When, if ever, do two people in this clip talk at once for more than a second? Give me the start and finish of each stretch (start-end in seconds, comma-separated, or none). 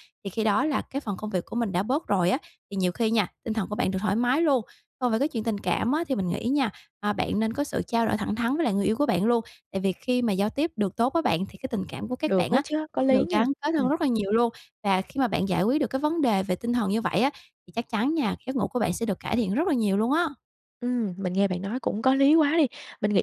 12.2-13.9